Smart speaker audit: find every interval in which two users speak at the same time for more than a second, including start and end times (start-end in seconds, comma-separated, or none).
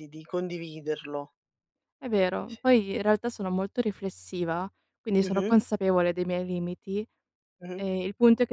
none